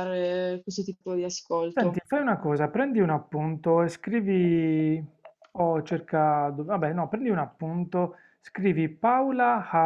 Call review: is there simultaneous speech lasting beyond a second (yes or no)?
no